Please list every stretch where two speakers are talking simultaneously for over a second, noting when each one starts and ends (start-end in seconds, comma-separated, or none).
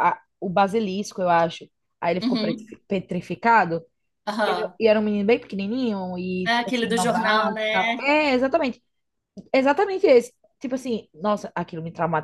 6.4-8.0